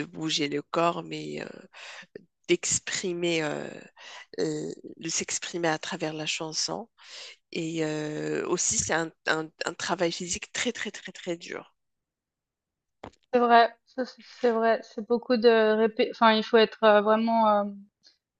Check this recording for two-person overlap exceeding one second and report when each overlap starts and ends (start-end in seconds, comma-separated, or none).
none